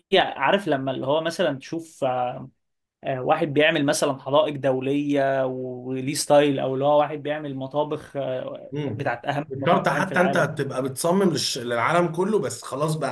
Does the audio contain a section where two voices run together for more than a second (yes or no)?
yes